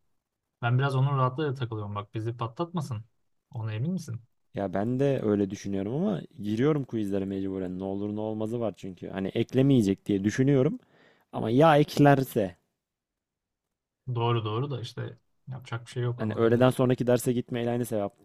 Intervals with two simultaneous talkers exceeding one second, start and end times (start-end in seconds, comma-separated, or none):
none